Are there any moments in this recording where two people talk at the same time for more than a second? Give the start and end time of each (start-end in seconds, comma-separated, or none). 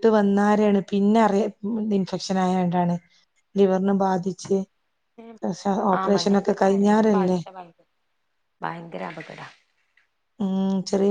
6.0-7.4